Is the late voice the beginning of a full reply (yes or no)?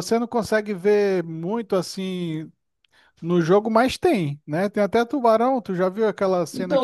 yes